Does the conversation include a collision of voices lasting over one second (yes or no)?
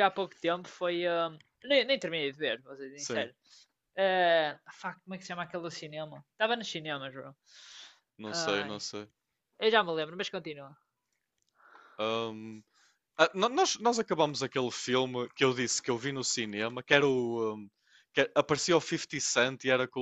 no